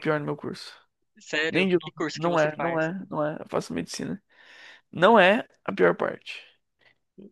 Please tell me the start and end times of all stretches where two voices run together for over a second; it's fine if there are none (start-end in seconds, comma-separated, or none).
1.5-2.9